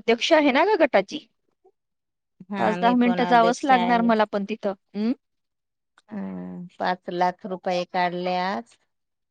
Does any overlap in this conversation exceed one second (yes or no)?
yes